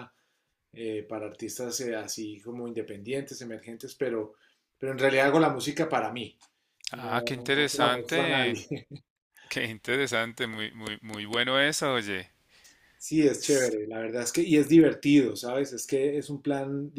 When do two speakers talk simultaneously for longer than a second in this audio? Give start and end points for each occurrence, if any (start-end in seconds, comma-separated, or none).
6.9-8.7